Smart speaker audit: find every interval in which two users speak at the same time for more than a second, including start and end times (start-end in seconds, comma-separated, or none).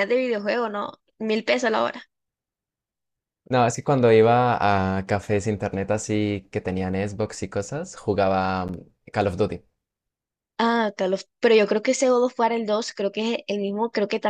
none